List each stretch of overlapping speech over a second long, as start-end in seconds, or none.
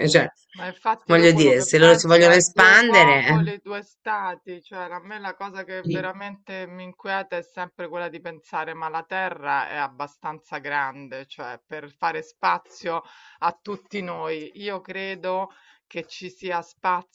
1.1-3.5